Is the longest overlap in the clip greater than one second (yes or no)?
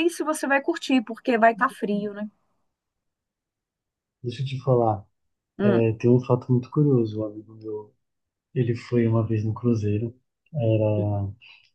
no